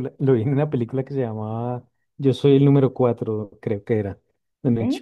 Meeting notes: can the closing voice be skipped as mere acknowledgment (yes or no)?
yes